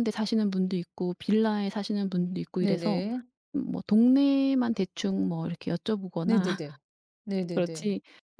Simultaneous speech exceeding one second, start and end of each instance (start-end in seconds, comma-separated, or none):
none